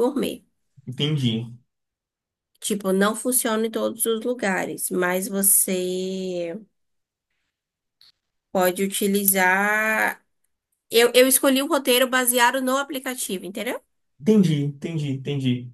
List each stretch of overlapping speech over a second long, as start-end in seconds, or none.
none